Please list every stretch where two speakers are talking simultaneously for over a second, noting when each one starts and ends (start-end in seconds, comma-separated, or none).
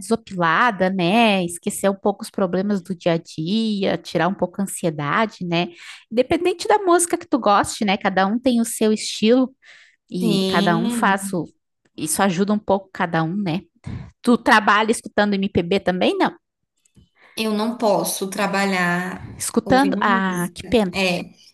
10.2-11.4, 19.4-21.0